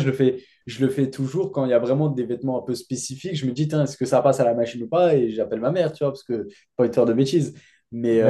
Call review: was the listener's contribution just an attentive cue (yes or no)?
yes